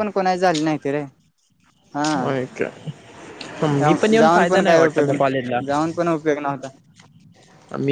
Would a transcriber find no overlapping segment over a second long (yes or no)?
no